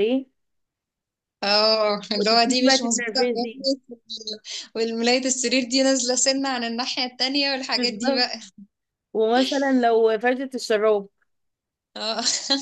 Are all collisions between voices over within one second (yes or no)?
no